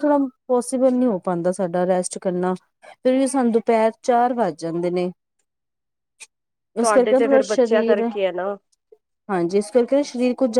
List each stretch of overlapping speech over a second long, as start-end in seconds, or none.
6.8-8.1